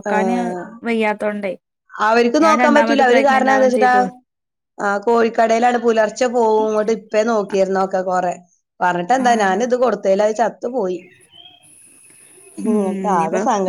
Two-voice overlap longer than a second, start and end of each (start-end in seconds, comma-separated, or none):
none